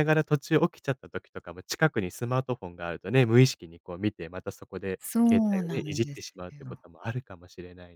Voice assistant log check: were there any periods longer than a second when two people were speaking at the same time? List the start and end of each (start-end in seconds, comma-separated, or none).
5.0-6.8